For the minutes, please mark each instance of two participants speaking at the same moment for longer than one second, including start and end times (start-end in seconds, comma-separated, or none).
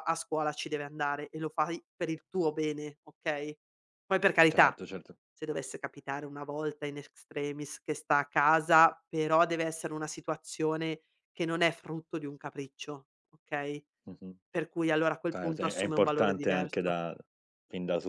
15.3-17.0